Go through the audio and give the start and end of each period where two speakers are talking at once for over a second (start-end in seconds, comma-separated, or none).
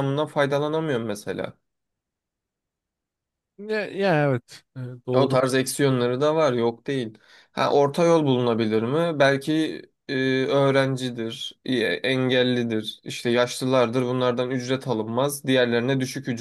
none